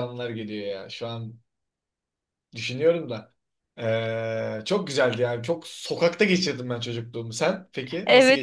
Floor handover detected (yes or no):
yes